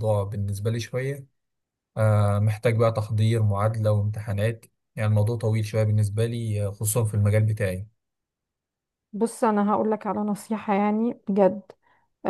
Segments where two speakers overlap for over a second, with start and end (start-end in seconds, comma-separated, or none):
none